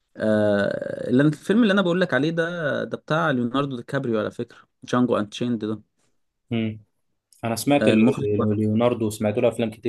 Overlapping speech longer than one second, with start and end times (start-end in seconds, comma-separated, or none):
none